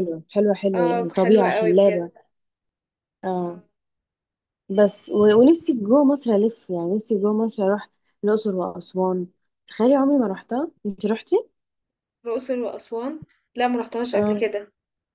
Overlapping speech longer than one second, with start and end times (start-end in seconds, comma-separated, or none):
0.7-2.1